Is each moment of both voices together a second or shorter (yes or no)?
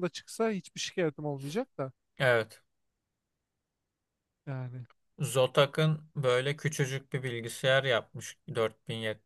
yes